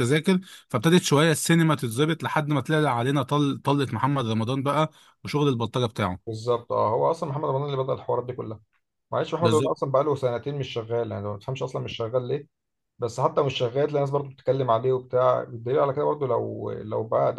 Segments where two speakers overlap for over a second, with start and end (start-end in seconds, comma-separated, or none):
none